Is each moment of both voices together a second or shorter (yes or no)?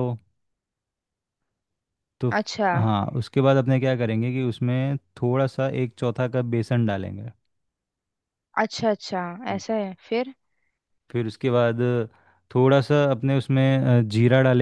yes